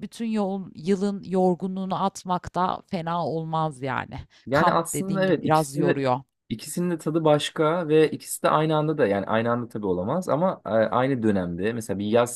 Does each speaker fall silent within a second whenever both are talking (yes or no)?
no